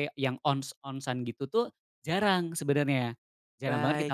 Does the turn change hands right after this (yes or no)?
yes